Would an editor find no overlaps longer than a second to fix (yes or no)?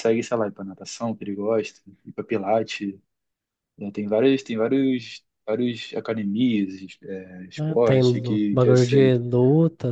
no